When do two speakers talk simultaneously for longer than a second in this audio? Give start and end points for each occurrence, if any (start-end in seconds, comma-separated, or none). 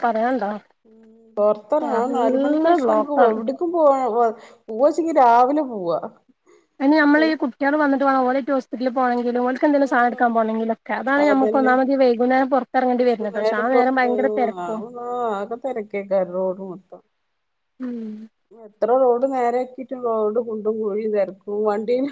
1.9-3.3